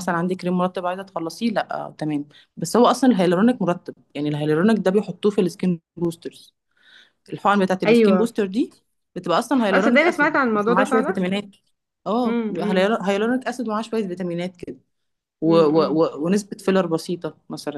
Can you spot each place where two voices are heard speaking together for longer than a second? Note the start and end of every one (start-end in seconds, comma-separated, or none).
9.7-11.2